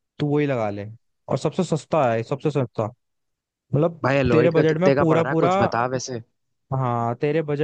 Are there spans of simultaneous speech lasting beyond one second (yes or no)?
yes